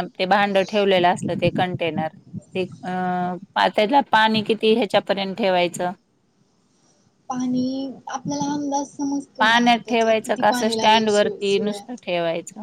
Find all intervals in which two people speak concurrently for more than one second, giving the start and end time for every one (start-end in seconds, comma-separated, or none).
9.4-11.8